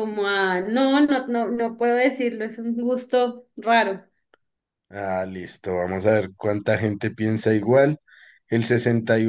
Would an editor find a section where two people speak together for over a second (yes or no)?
no